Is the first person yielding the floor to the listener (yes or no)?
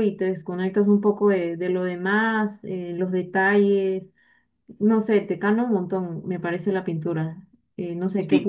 yes